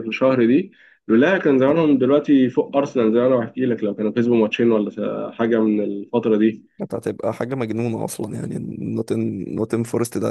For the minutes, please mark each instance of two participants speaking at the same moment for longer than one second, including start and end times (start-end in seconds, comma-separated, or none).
none